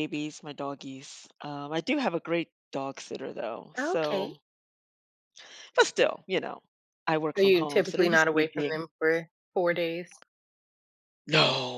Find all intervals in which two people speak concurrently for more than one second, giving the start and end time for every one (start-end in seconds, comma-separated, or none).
7.3-8.8